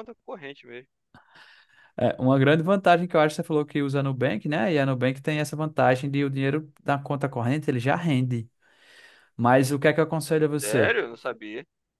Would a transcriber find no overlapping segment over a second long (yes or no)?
yes